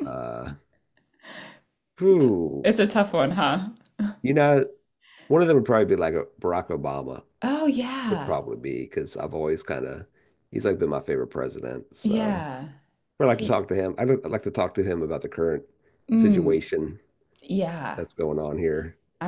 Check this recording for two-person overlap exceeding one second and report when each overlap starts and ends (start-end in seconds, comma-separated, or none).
none